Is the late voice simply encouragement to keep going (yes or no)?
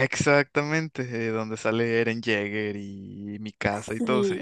no